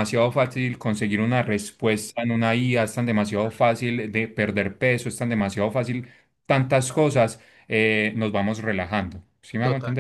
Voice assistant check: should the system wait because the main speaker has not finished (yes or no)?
no